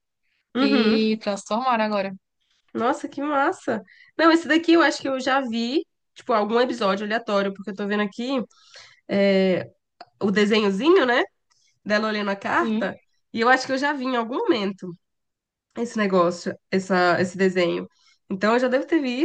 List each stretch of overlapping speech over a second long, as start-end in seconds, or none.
none